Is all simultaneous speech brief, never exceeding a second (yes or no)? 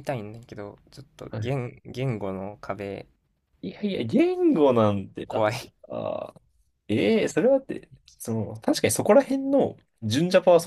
yes